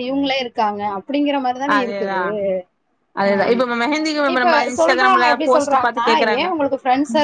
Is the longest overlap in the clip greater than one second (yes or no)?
yes